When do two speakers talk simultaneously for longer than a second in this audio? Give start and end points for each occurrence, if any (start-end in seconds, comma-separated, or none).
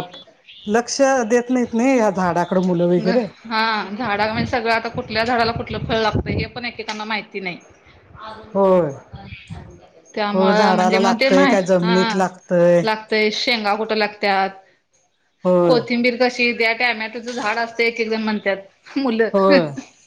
10.3-12.2